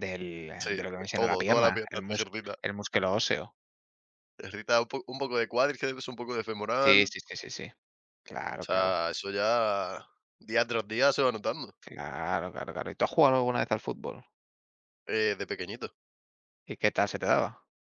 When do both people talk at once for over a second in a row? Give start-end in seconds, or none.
0.6-2.5